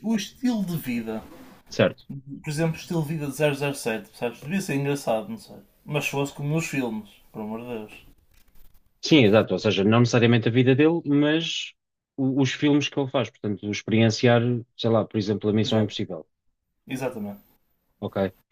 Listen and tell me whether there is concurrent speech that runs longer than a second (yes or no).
no